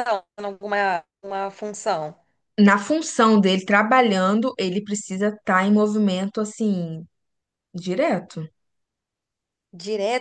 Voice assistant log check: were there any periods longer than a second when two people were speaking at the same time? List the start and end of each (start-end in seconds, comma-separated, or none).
none